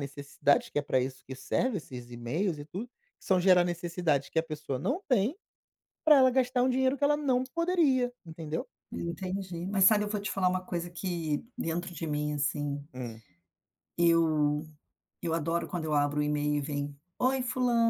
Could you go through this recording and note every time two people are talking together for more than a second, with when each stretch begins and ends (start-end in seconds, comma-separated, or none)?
none